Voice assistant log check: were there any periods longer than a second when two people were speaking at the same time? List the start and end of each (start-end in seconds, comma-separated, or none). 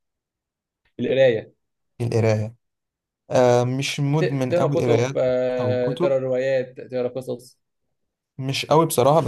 4.1-6.2